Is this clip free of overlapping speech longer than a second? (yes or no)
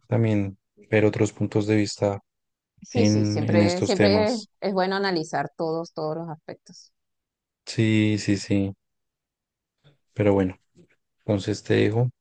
no